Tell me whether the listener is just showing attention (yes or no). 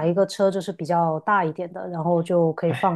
yes